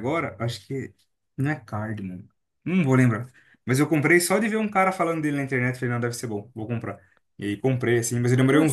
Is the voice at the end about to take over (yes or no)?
no